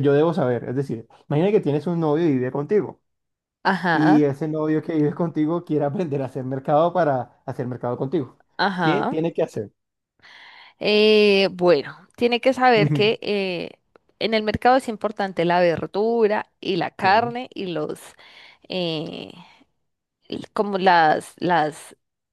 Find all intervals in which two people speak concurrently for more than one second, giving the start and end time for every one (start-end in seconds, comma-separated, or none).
none